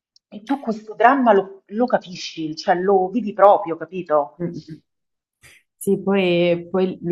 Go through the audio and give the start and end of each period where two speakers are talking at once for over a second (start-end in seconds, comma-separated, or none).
none